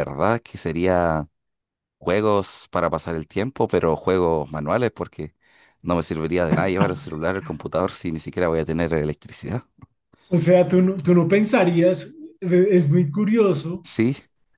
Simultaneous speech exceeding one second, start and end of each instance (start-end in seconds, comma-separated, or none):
none